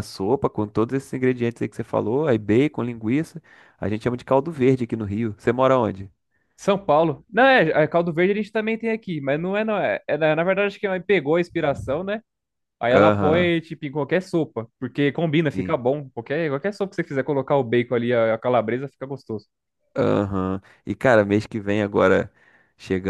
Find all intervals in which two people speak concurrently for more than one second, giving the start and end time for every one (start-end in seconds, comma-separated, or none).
none